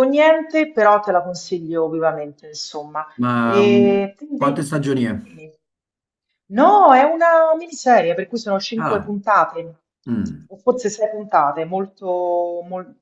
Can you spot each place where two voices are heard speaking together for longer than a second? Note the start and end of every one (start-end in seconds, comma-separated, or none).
3.4-4.7